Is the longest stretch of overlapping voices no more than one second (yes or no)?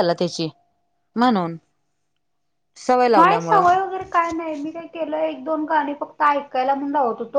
yes